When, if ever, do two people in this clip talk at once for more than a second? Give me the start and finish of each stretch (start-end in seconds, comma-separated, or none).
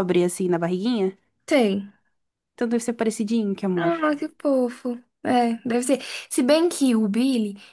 none